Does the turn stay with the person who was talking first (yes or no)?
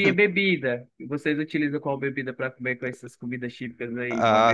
no